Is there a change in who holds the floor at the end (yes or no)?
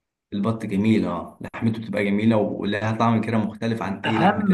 yes